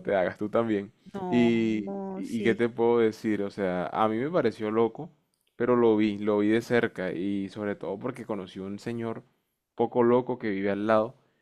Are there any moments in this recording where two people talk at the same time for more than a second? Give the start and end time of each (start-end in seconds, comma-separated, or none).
1.3-2.6